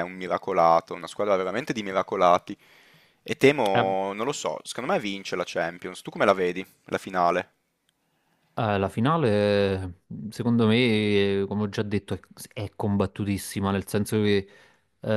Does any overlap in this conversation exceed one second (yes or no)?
no